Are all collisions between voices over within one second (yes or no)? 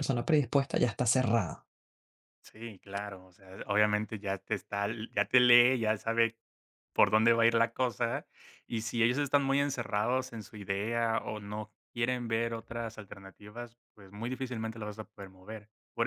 yes